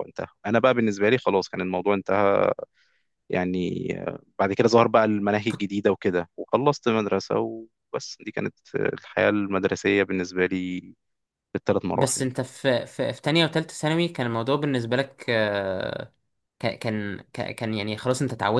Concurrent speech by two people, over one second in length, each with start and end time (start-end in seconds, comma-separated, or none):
none